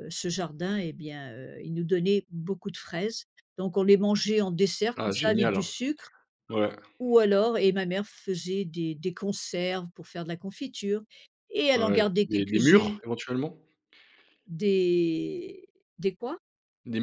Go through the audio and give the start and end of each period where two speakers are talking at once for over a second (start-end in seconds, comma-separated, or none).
11.8-13.0